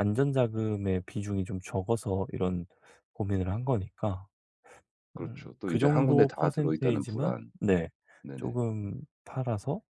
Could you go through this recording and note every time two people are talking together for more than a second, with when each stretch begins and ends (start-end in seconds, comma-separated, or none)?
5.2-7.5